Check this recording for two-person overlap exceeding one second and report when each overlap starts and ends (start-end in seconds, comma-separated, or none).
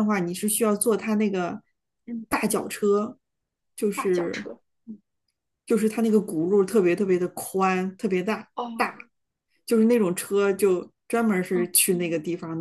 none